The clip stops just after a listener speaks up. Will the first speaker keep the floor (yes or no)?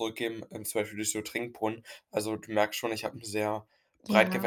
yes